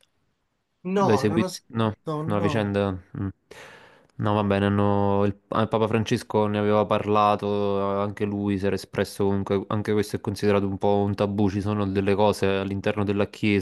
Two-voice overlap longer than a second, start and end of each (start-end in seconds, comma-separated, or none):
1.0-2.7